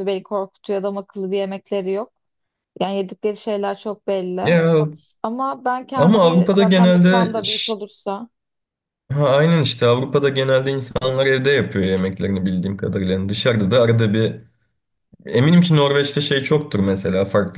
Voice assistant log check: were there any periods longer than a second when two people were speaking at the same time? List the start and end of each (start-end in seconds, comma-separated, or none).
6.0-7.7